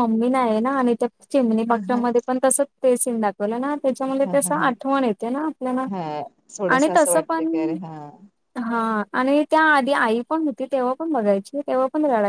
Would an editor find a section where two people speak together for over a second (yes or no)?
no